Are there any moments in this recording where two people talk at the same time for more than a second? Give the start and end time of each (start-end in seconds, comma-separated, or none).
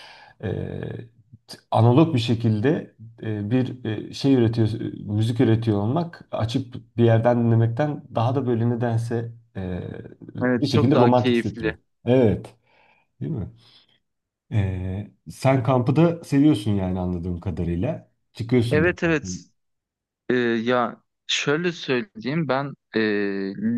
10.4-11.8